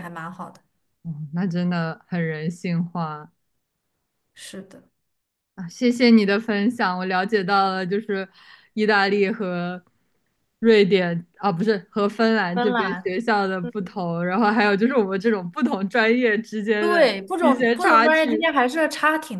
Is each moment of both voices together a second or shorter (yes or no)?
no